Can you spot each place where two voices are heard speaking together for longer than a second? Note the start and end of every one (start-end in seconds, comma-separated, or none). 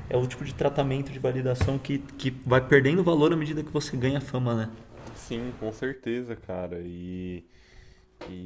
none